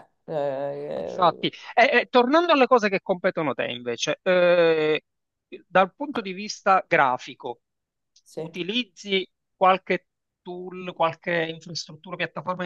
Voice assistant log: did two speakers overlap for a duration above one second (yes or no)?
no